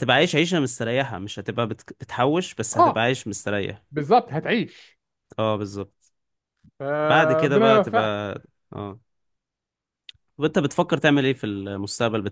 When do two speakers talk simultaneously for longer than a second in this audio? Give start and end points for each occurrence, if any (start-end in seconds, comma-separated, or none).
7.0-8.2